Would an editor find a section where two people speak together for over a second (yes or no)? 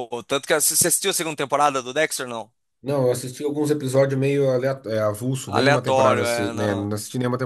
yes